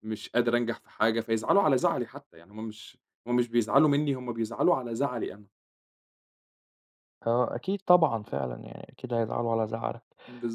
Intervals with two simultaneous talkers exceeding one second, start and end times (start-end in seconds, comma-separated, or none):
none